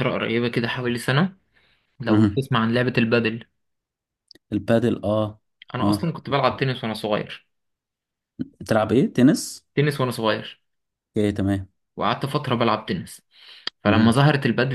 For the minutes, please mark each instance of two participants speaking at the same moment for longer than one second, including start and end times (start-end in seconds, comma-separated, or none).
none